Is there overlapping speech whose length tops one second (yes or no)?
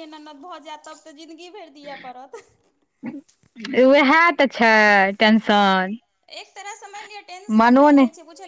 no